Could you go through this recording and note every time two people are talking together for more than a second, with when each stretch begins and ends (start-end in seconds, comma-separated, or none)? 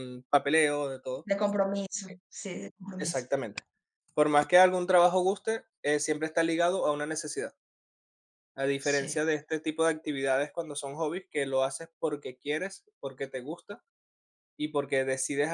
none